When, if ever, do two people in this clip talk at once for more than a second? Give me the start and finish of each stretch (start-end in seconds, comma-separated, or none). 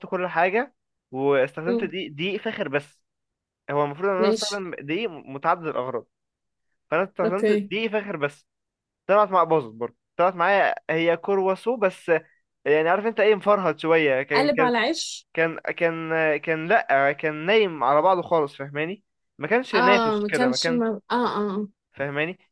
19.7-20.9